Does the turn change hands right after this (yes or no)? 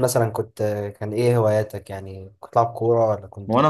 yes